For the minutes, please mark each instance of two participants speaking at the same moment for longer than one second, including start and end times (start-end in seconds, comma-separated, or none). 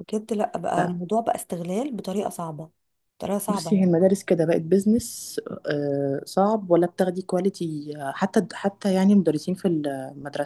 none